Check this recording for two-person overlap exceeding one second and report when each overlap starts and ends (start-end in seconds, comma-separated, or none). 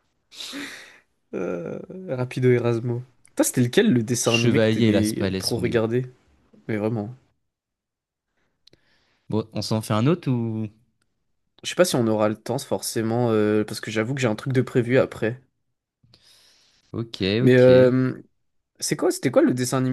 4.2-5.8